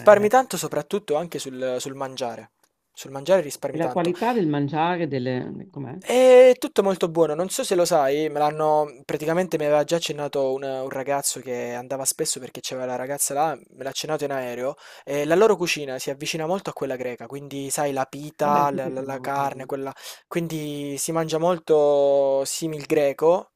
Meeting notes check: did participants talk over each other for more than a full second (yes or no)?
yes